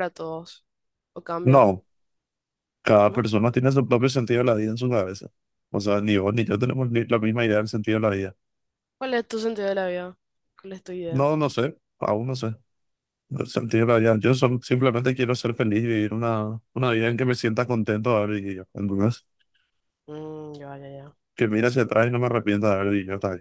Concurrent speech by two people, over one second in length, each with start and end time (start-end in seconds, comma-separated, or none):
none